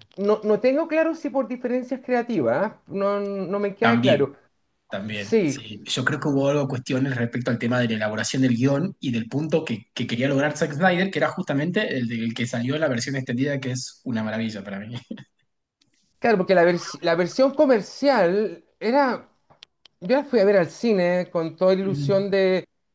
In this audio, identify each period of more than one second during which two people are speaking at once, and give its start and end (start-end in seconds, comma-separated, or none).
none